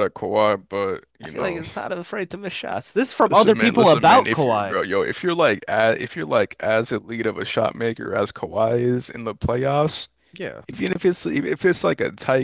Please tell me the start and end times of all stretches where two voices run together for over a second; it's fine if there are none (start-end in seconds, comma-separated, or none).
3.3-4.8